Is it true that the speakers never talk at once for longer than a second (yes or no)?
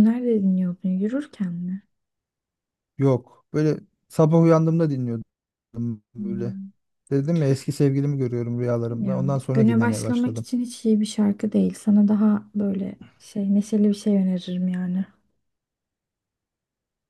no